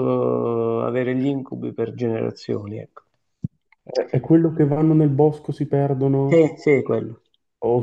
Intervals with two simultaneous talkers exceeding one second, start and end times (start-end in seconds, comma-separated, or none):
none